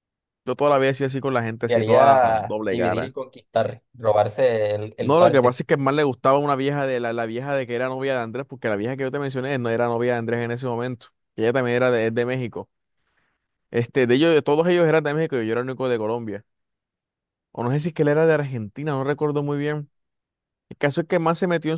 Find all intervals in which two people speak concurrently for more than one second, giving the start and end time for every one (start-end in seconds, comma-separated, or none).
1.7-3.1